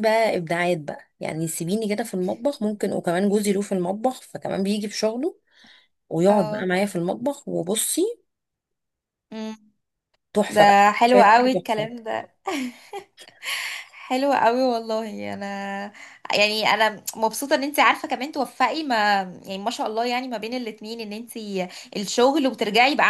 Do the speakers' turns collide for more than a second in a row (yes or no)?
yes